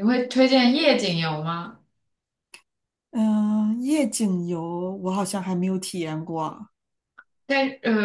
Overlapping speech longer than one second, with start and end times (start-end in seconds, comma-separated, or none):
none